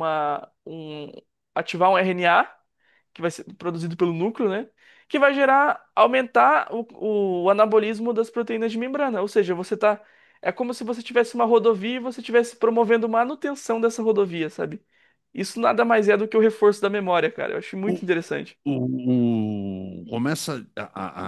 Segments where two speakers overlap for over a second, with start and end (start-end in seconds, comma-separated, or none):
none